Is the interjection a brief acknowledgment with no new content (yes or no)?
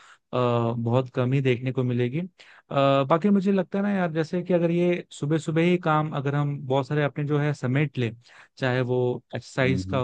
yes